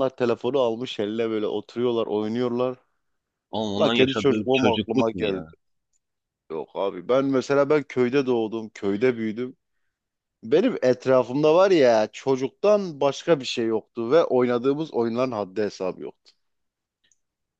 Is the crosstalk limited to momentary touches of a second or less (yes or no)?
no